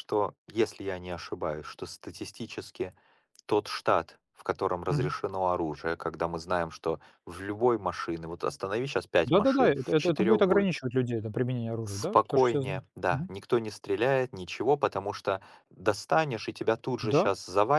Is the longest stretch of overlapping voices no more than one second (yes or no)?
no